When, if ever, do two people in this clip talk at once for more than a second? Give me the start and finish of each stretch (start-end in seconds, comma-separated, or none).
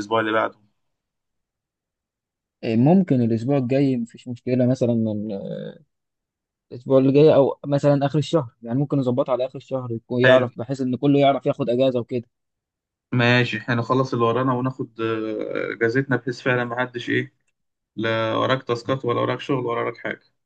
none